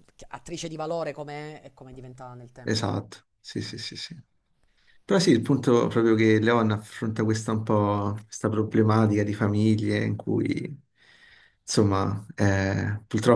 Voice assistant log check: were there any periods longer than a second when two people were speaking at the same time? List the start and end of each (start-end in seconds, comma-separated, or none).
none